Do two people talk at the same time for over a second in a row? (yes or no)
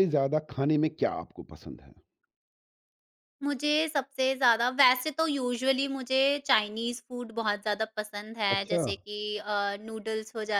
no